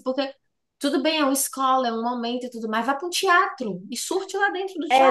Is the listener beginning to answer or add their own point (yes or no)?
yes